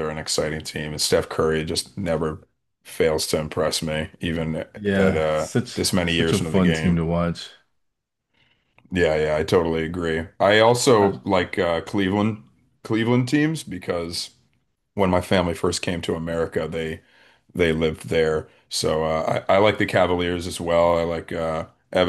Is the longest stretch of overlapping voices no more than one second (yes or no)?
no